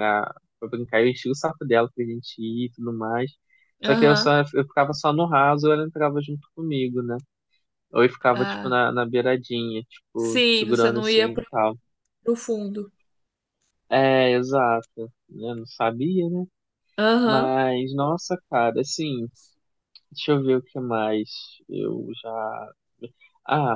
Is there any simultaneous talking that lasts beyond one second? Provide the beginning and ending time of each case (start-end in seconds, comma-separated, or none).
10.2-11.4